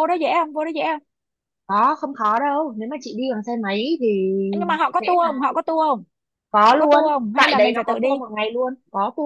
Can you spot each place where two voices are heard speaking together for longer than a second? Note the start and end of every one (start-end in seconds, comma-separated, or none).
6.7-8.2